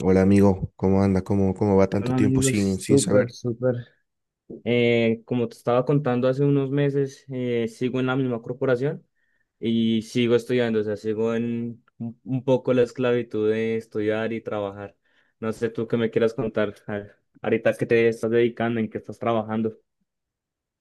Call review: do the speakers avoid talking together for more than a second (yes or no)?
no